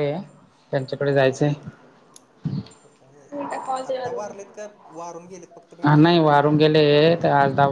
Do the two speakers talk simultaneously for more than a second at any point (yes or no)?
no